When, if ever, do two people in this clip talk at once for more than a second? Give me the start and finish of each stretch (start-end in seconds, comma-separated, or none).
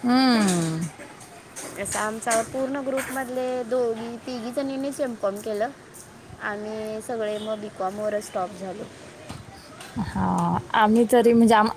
none